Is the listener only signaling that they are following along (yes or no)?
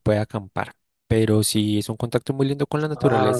yes